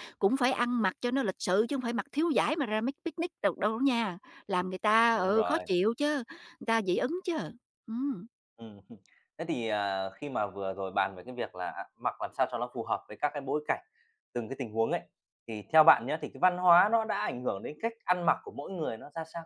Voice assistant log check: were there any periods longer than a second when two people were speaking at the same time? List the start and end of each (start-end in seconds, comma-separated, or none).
none